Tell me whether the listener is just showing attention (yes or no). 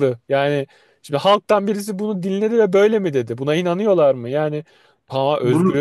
yes